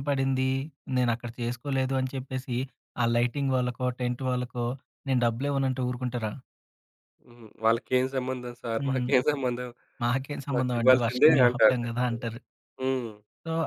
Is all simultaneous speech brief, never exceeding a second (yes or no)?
no